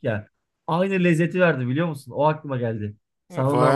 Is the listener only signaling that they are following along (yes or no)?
no